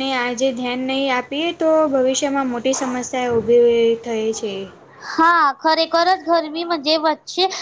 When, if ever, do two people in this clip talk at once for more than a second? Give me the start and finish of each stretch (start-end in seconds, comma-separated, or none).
none